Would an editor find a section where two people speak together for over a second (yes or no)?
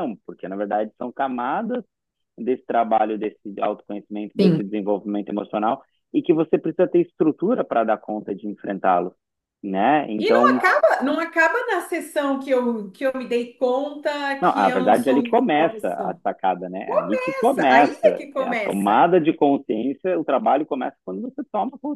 yes